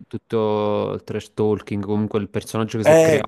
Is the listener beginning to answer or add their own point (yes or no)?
yes